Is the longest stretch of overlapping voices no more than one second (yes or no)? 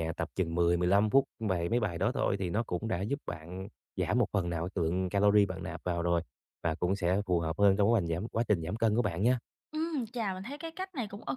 yes